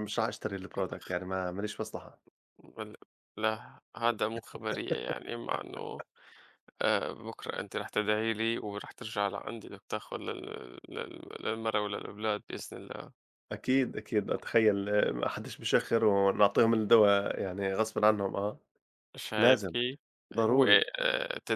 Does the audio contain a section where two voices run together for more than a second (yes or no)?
no